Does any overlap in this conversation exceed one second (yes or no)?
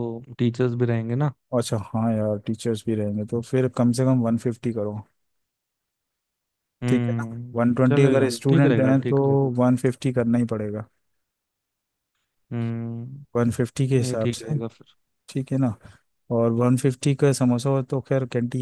yes